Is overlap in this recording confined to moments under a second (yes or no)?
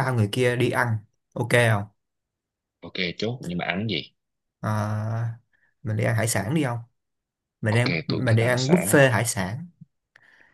no